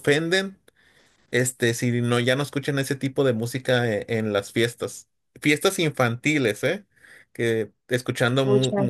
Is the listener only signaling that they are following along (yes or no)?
yes